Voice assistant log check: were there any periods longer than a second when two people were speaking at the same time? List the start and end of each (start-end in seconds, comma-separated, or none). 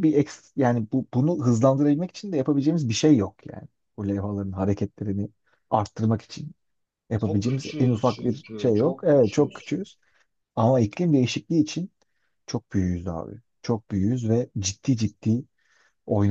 7.2-9.9